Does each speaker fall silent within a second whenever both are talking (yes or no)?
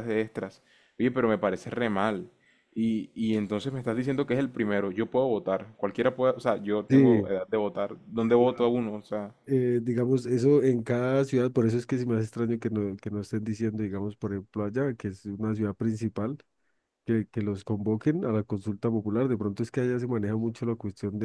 yes